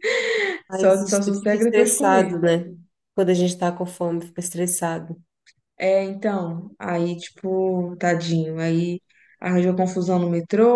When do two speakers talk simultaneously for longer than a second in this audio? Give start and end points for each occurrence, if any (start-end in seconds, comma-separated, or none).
0.7-2.3